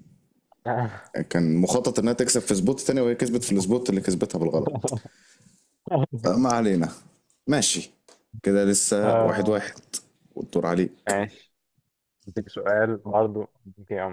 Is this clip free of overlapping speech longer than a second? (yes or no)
yes